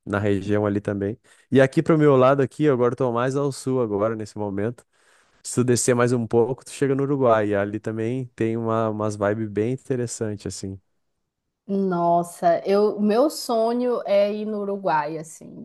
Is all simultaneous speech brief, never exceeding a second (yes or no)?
yes